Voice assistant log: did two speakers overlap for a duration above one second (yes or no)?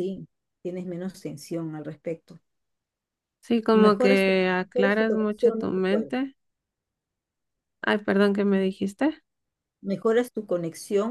yes